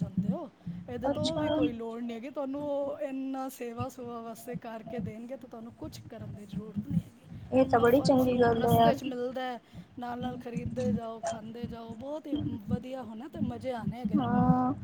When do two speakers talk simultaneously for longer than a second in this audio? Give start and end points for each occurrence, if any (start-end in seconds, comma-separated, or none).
7.5-9.0